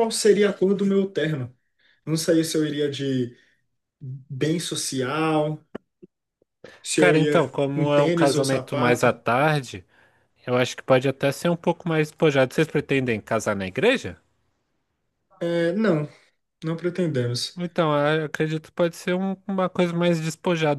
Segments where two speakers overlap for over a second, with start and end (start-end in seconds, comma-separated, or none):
7.0-9.2